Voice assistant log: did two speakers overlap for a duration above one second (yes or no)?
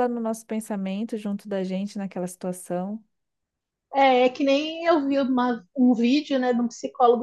no